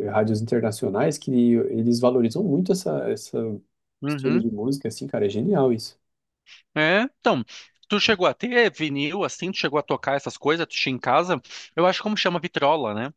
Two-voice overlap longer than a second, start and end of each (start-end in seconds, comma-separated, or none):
none